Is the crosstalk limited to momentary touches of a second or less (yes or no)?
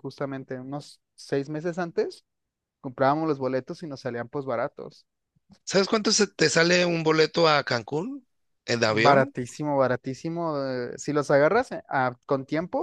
yes